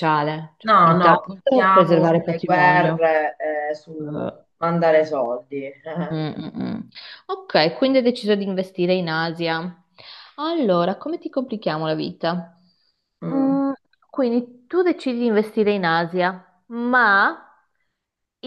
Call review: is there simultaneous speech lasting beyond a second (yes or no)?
yes